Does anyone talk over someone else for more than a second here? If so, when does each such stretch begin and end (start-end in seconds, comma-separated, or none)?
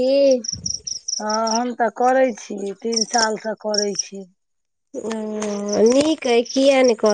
none